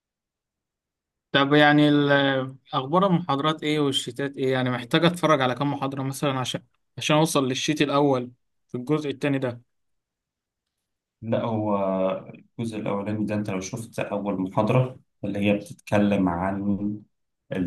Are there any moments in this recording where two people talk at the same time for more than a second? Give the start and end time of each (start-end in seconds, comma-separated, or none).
none